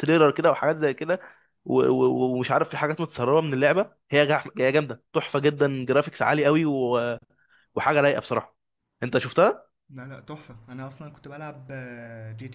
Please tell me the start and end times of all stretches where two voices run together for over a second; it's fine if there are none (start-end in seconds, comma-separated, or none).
none